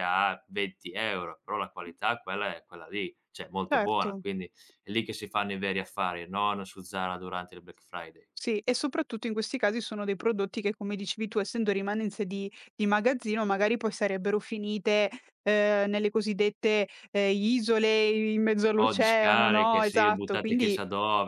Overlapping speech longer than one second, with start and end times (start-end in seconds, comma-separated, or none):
18.8-20.8